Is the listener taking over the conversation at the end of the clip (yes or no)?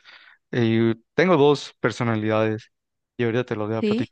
no